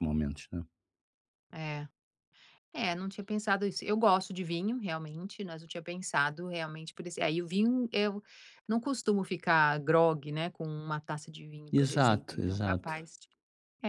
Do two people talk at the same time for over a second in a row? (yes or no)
yes